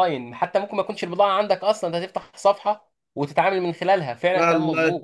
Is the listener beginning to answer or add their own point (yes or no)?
yes